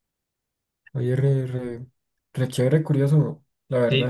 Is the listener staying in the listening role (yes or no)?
no